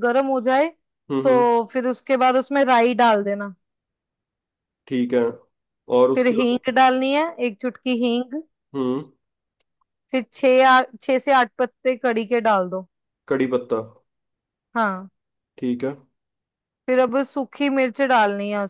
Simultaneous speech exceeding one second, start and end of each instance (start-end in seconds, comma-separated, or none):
none